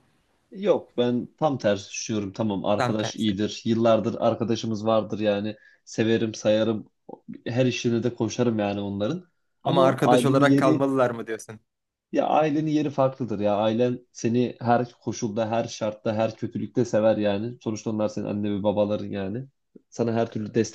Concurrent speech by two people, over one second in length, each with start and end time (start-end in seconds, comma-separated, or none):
9.6-10.9